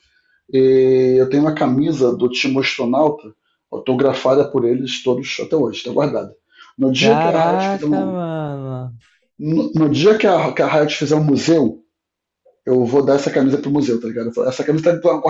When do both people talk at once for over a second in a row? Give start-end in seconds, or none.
6.9-8.2